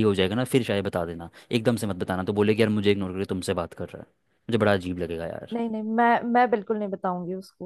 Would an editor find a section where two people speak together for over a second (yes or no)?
no